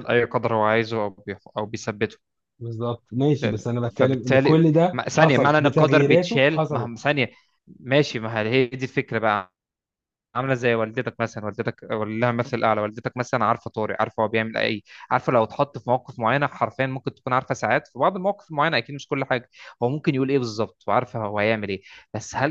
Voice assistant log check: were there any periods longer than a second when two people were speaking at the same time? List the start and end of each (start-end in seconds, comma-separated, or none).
3.3-6.9